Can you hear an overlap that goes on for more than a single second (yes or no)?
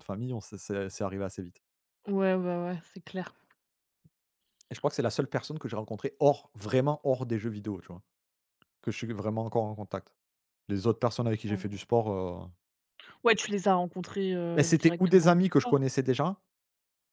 yes